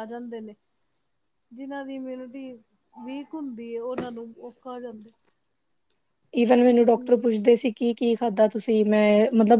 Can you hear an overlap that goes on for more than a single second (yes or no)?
no